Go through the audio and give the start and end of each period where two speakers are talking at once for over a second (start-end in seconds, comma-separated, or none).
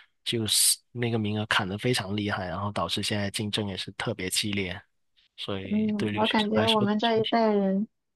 5.6-7.4